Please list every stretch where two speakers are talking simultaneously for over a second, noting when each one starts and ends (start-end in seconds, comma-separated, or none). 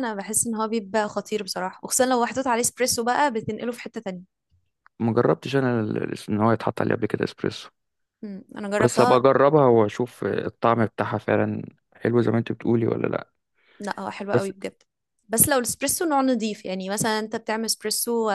none